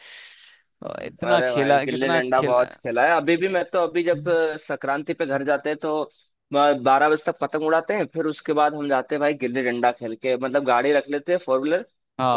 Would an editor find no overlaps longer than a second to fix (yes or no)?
no